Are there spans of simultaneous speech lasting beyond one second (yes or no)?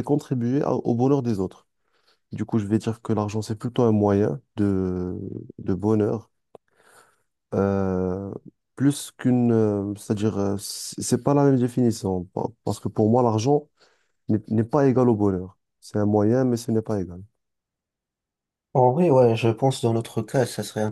no